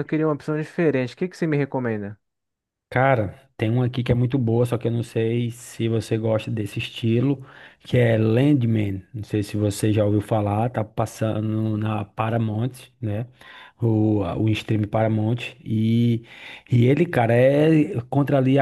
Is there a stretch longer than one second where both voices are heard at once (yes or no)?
no